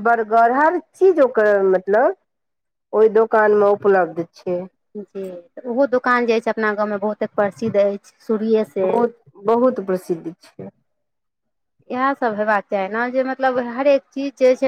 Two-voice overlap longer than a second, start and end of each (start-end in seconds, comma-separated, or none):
none